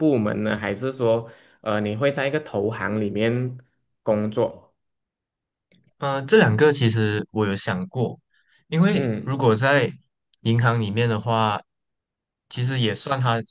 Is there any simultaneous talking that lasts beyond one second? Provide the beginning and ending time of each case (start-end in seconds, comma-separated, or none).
none